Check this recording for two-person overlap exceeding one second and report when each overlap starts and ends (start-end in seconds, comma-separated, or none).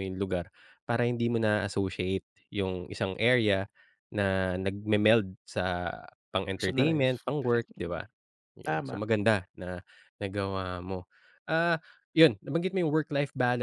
6.5-8.0